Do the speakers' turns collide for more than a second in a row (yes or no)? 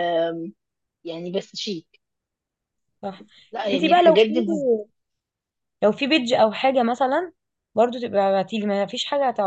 no